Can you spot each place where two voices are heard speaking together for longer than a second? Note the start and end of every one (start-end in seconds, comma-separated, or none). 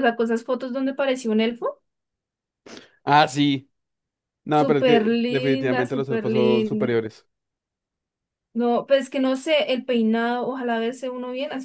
4.5-7.0